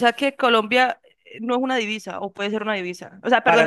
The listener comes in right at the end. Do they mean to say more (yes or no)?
yes